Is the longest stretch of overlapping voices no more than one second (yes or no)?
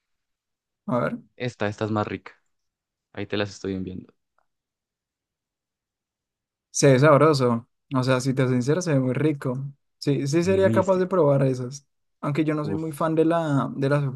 yes